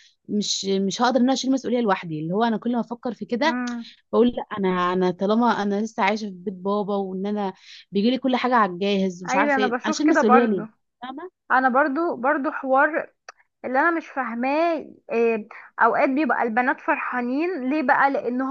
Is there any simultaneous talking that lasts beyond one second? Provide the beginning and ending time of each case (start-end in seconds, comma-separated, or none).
9.3-10.6